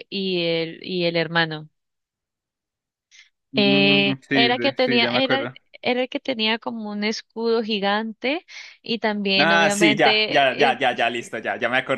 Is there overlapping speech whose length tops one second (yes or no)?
yes